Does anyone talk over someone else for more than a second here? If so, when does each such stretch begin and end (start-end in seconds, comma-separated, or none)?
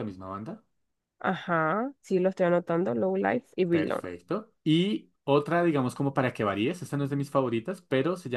none